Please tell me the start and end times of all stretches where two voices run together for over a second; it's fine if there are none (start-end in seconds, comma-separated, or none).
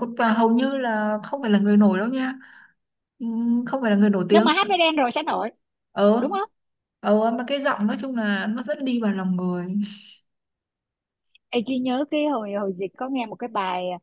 none